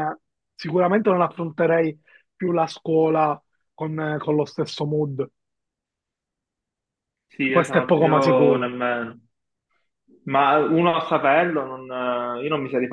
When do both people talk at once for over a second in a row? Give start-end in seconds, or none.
7.5-8.7